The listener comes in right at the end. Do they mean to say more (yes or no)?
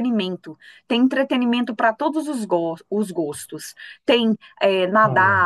no